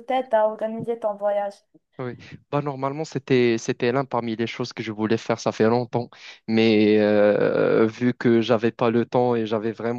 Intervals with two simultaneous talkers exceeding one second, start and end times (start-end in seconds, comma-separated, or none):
none